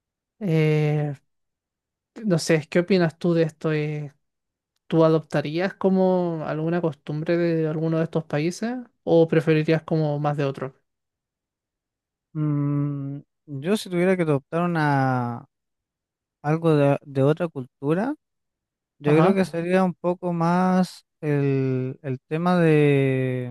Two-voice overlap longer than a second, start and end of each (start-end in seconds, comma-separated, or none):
none